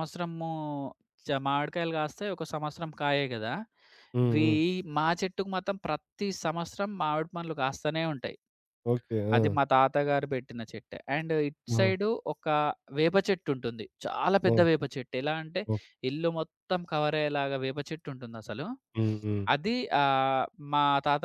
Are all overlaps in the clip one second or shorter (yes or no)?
yes